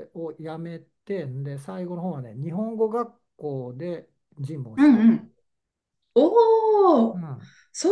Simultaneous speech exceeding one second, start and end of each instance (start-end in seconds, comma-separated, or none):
none